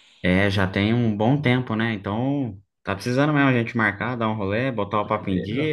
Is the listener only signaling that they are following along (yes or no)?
no